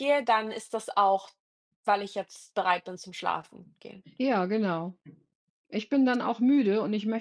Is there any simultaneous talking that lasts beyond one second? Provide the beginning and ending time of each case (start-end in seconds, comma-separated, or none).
none